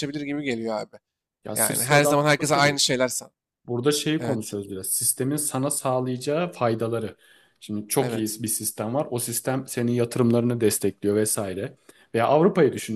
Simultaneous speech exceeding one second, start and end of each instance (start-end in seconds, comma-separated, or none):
1.6-2.8